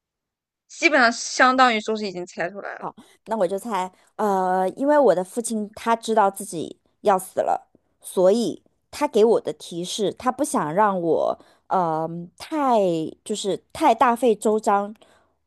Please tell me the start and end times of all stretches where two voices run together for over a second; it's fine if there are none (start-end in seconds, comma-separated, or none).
none